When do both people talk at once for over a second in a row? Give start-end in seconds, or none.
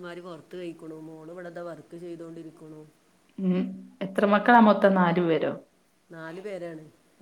none